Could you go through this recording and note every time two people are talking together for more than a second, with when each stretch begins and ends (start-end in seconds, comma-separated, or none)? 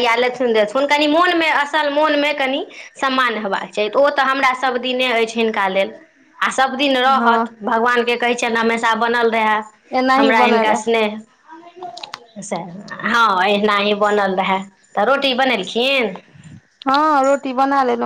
none